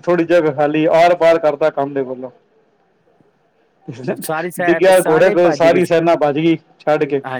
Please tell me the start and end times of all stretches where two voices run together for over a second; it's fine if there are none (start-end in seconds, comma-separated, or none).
4.6-6.0